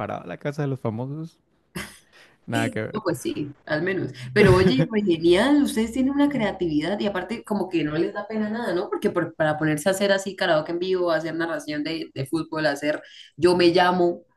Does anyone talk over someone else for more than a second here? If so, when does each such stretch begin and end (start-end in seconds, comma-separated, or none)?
none